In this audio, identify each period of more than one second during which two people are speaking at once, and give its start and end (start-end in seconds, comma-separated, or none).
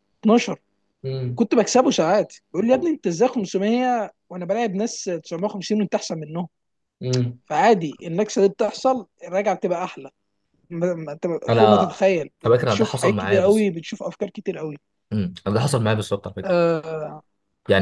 12.4-13.7